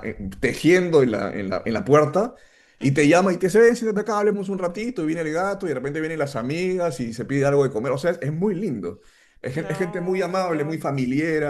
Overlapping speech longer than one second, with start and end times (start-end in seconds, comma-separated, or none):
9.5-10.9